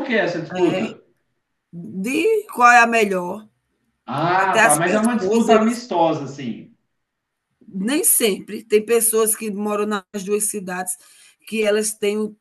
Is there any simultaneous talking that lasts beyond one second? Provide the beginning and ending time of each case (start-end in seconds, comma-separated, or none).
4.4-5.8